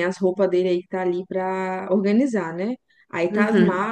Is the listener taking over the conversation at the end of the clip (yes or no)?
no